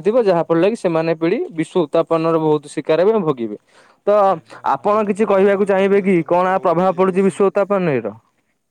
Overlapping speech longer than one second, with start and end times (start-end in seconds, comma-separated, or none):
4.8-7.3